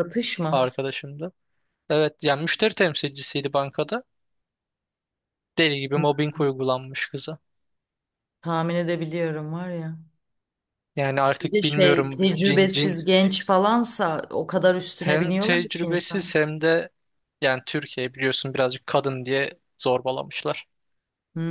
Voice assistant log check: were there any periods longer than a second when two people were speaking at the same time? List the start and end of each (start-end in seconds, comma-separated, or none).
11.4-12.9, 15.0-16.3